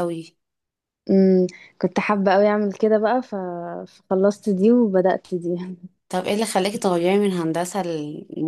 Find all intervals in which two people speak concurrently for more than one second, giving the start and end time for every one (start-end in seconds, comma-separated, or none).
none